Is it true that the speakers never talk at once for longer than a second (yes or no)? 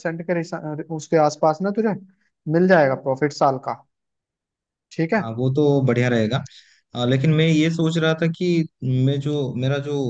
yes